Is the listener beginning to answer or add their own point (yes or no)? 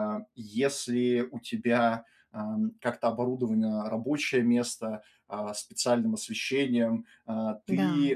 no